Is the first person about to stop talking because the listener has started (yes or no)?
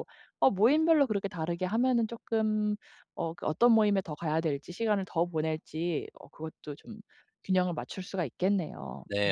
yes